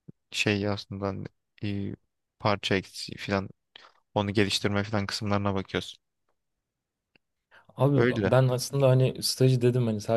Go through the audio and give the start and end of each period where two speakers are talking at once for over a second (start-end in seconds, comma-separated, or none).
none